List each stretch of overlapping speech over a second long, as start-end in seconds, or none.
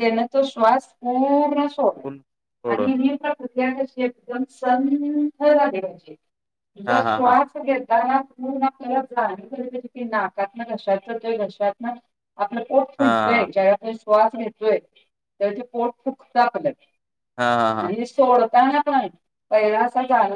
none